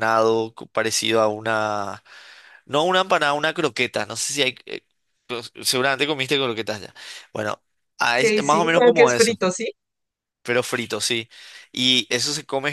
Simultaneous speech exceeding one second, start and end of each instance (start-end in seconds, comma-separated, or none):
8.0-9.4